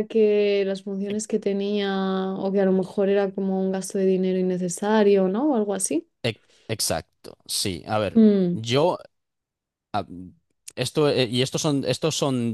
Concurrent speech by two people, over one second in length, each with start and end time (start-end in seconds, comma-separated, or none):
none